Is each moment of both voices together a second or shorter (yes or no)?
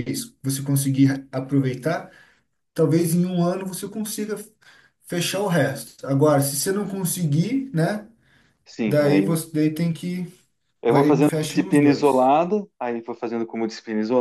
no